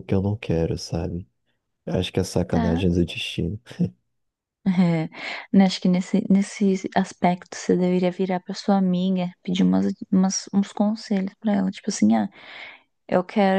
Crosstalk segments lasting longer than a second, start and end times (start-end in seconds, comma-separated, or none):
none